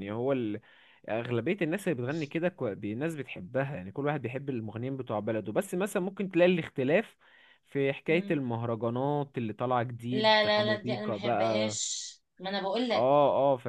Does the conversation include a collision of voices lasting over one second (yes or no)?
yes